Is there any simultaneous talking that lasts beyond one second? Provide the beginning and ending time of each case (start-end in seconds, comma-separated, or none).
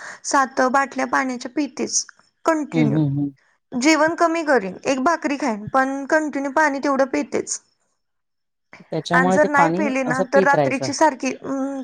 9.2-10.9